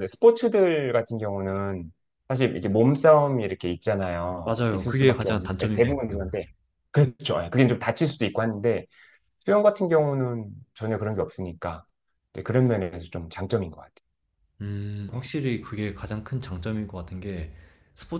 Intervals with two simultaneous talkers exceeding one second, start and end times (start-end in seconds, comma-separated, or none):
4.4-6.3